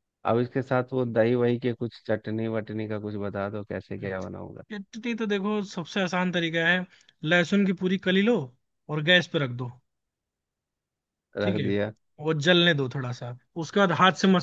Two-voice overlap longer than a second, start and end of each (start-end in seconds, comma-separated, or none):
none